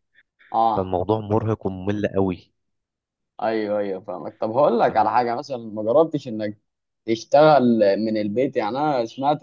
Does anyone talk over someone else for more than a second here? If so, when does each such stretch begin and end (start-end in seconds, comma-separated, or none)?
none